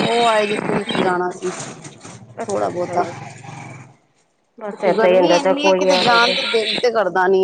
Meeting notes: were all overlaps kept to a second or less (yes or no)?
no